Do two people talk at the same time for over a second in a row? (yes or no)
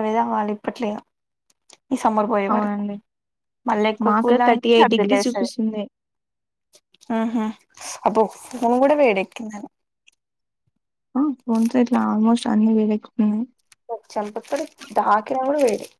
yes